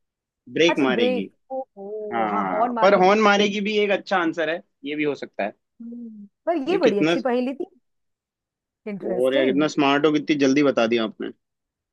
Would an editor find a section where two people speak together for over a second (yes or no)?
yes